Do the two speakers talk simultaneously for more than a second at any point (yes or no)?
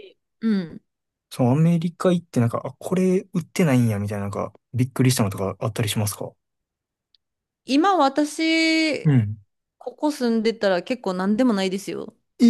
no